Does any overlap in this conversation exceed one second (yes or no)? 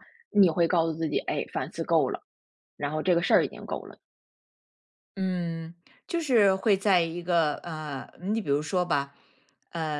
no